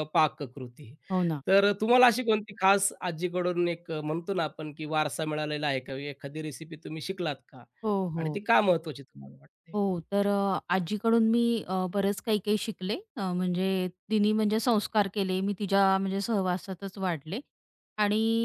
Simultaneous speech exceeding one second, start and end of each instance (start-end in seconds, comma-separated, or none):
none